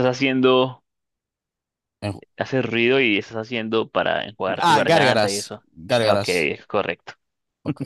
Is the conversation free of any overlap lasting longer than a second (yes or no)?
no